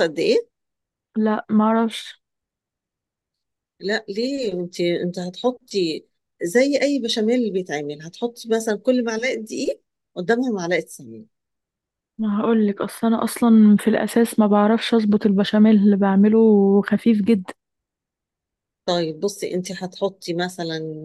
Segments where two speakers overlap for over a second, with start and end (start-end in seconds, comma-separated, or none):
none